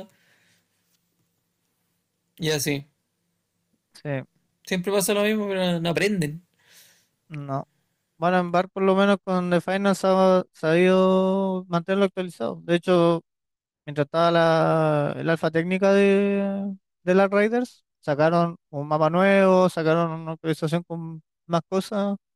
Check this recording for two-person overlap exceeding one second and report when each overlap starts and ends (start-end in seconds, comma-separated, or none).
none